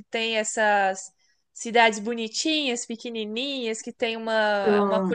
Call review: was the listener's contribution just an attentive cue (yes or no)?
yes